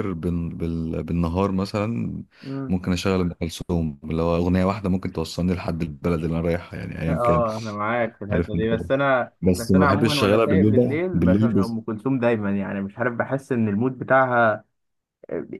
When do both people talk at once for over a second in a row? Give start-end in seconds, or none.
9.4-11.6